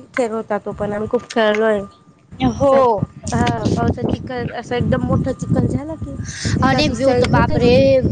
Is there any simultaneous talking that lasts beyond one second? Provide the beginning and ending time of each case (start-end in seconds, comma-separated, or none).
none